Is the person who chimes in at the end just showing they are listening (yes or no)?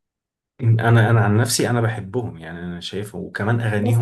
no